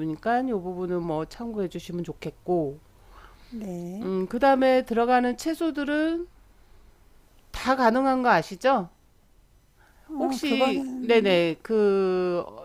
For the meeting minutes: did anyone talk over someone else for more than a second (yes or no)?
yes